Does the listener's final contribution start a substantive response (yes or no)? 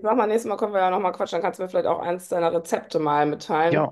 yes